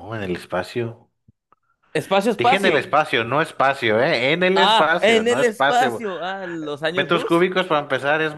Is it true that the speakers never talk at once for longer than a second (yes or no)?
no